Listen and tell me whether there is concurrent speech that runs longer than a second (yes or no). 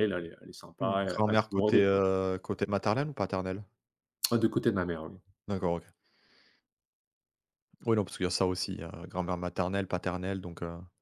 yes